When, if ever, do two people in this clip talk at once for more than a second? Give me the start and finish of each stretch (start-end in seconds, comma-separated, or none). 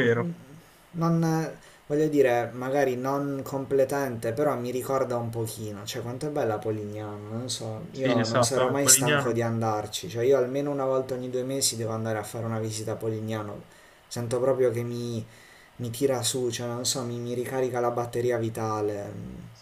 7.9-9.4